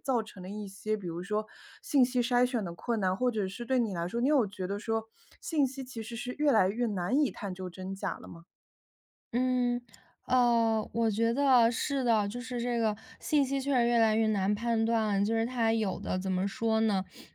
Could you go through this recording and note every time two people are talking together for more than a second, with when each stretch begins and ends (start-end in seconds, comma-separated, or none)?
none